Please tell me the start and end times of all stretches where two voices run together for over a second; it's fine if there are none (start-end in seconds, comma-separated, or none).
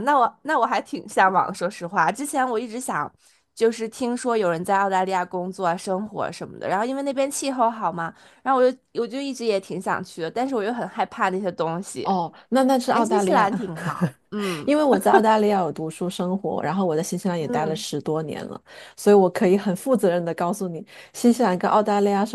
none